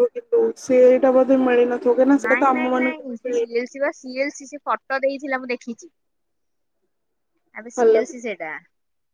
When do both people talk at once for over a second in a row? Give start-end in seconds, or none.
none